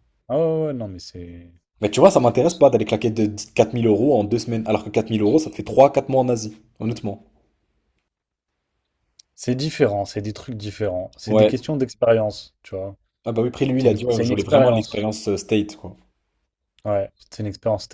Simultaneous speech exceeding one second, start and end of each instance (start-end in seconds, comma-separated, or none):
13.8-15.0